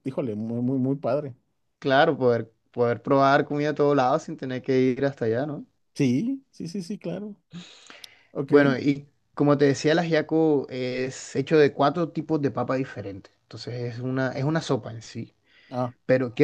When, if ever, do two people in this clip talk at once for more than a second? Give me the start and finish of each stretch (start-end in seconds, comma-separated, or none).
none